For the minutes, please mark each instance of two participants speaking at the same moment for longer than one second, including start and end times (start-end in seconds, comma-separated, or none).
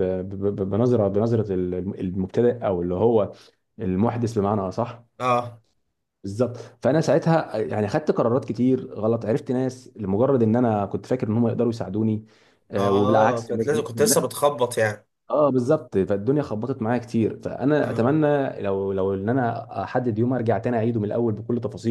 12.8-14.2